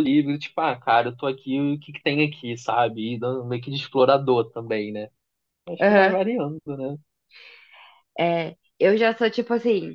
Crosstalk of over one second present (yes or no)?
no